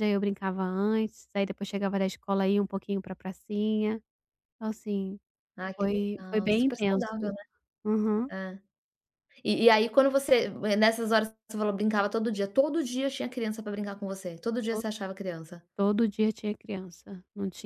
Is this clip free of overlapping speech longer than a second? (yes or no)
no